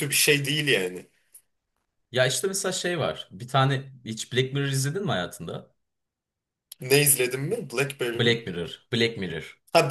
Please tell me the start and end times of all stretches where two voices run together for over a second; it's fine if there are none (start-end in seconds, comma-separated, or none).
none